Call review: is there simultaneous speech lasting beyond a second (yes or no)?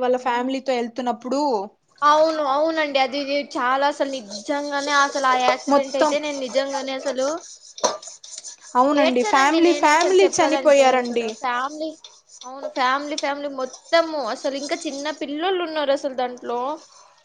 yes